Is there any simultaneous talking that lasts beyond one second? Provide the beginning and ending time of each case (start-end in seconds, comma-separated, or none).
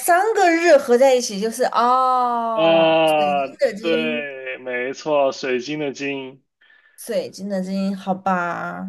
2.5-4.3